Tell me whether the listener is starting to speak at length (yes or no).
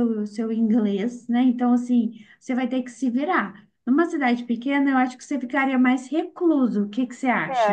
yes